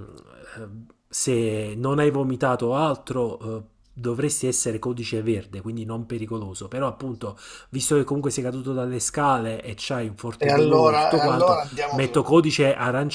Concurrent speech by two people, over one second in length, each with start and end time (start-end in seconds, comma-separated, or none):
10.4-12.3